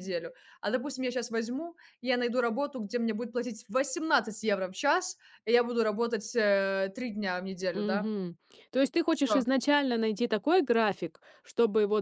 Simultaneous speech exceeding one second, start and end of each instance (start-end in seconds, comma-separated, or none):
none